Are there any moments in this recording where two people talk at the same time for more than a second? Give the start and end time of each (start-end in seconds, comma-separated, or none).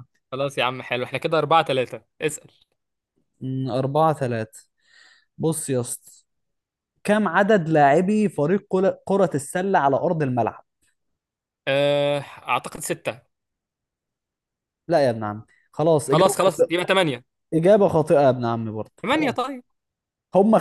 none